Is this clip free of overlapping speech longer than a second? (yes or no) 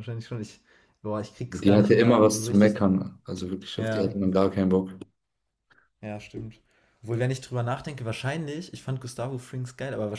no